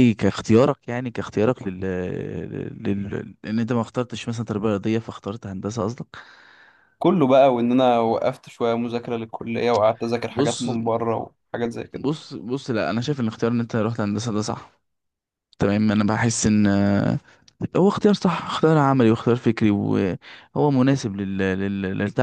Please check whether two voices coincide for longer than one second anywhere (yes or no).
no